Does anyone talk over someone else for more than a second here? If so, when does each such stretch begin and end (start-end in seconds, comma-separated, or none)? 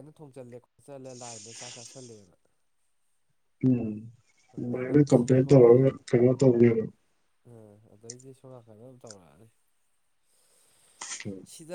none